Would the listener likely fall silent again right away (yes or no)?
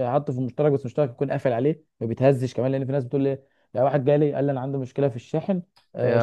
no